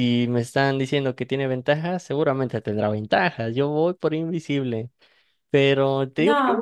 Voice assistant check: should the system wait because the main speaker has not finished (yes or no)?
yes